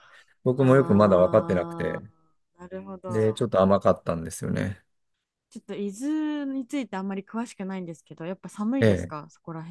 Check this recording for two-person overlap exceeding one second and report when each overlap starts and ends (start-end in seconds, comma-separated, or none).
0.6-2.0